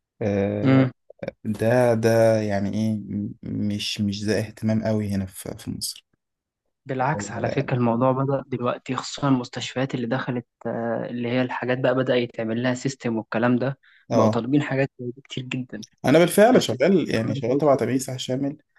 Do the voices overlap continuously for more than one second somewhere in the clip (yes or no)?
yes